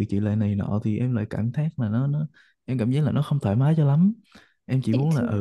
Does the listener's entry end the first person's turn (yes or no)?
no